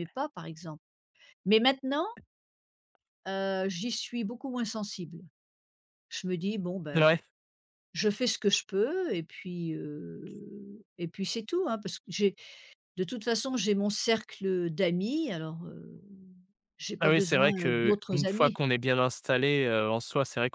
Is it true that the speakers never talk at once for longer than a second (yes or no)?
no